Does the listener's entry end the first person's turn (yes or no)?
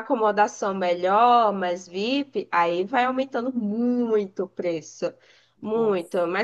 no